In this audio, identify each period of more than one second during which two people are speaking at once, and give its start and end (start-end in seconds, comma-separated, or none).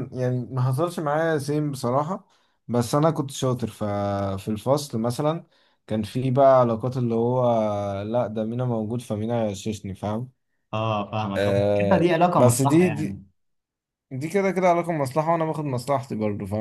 11.4-13.2